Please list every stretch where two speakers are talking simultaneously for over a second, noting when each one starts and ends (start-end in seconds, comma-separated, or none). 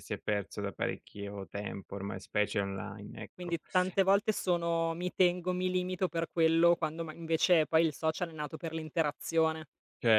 none